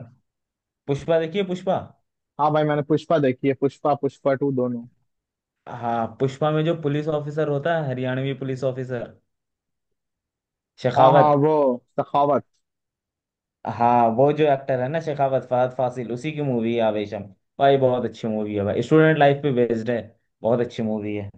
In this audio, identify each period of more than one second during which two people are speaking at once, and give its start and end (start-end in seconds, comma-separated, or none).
none